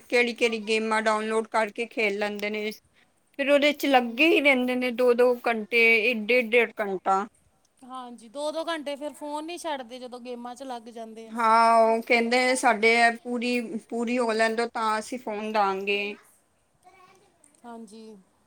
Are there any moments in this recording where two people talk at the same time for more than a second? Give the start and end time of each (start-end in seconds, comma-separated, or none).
none